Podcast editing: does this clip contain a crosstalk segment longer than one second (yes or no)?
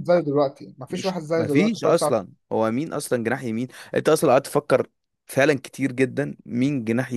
yes